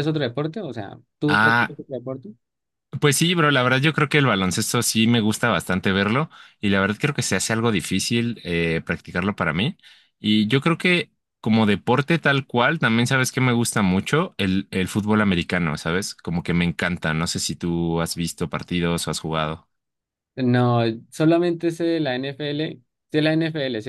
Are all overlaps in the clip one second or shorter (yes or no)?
yes